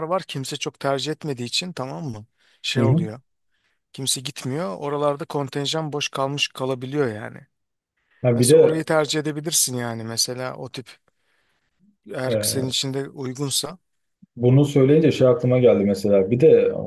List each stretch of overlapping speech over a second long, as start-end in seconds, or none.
none